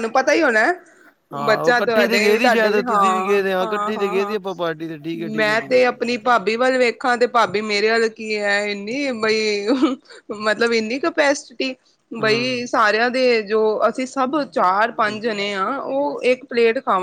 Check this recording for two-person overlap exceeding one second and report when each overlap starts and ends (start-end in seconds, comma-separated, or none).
1.5-4.4